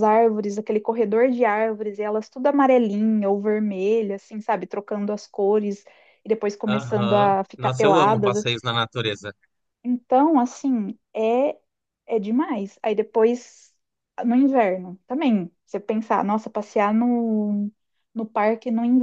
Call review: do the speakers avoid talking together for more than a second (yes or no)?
no